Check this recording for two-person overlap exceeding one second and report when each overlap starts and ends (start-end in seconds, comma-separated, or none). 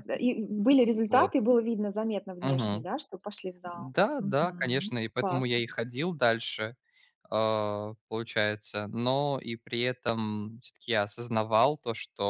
3.6-5.6